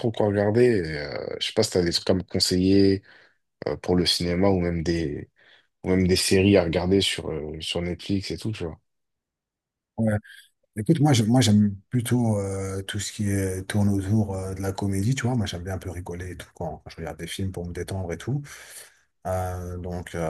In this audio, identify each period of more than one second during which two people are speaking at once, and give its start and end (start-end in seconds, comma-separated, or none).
none